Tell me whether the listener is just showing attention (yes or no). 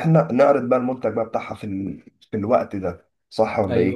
no